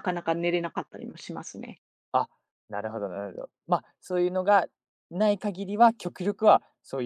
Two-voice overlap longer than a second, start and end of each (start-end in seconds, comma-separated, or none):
none